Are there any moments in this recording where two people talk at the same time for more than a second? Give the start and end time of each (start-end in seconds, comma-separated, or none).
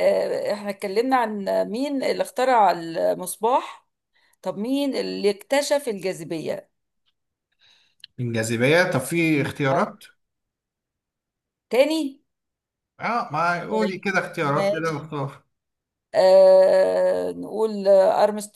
13.7-15.1